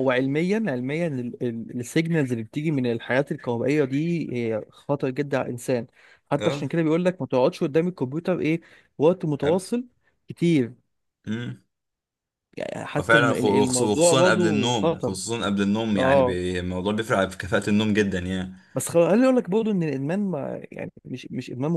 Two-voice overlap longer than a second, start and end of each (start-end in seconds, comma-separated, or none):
13.0-15.2